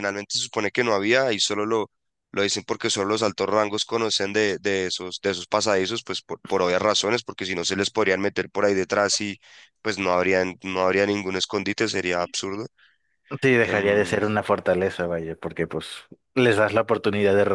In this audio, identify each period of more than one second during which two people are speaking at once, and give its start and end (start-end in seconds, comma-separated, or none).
none